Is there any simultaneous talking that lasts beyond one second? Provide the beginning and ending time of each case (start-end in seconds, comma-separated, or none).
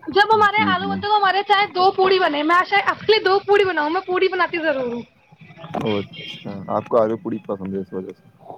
none